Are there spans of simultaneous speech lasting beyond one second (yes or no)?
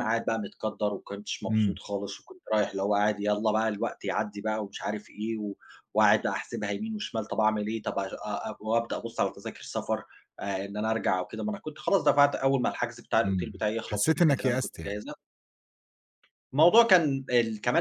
yes